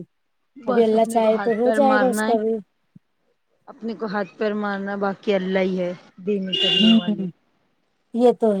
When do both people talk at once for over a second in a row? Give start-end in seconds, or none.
0.7-2.3